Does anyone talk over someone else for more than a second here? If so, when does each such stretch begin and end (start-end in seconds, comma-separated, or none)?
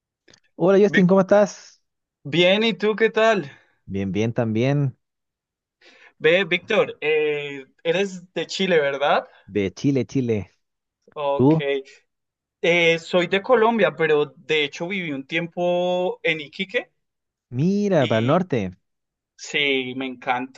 none